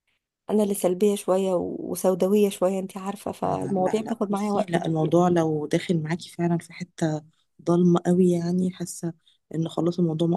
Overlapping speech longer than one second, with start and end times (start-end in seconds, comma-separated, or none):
3.4-5.1